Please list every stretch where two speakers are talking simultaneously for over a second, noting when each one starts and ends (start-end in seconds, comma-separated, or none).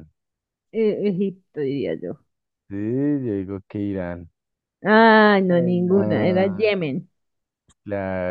5.5-6.7